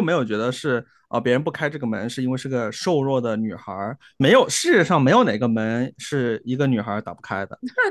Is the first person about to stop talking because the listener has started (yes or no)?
yes